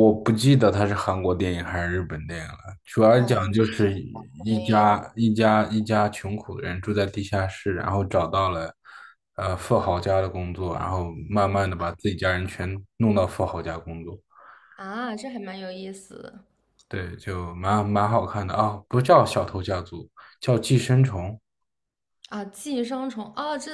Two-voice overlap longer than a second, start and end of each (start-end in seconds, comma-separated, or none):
3.2-5.0